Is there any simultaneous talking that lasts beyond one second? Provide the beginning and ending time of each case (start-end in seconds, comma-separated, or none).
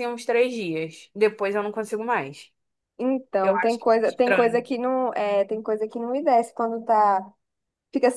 3.4-4.7